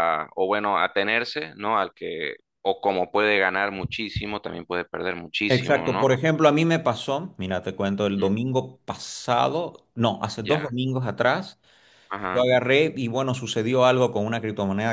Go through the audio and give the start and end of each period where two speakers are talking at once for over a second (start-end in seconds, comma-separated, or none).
none